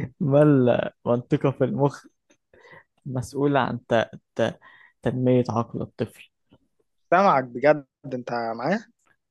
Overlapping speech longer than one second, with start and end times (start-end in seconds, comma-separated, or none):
none